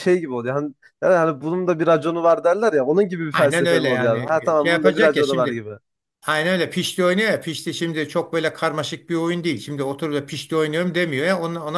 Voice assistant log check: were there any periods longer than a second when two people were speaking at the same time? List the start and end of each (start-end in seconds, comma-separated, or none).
3.3-5.6